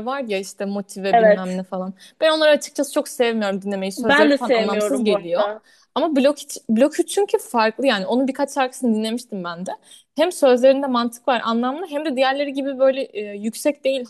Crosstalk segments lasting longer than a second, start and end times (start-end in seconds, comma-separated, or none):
4.0-5.4